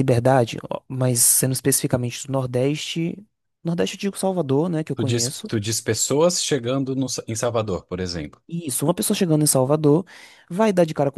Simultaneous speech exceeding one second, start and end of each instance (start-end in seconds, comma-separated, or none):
none